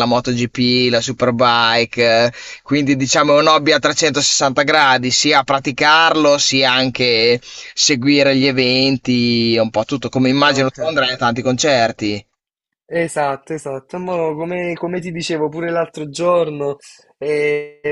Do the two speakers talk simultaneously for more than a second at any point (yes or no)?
no